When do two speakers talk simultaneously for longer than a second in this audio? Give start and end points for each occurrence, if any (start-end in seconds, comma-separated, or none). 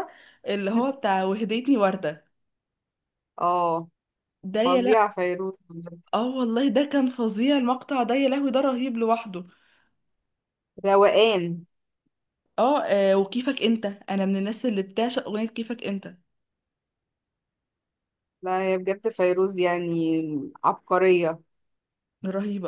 none